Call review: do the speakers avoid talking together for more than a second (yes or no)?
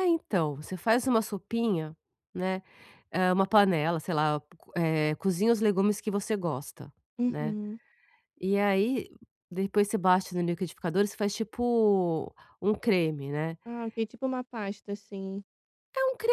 yes